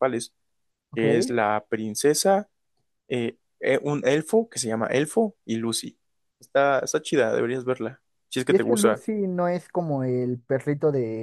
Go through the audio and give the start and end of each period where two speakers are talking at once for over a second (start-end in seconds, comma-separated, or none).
none